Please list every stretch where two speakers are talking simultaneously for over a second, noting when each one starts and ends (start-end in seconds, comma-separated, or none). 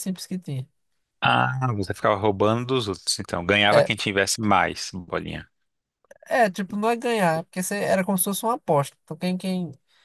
none